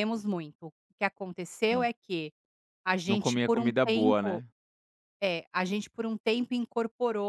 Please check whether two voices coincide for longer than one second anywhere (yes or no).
yes